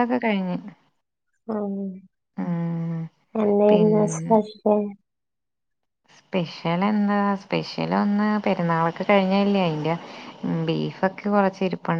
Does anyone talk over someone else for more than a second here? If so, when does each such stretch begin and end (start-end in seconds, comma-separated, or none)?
none